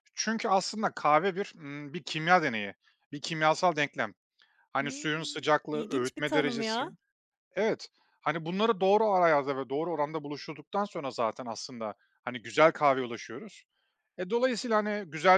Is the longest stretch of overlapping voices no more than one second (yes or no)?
no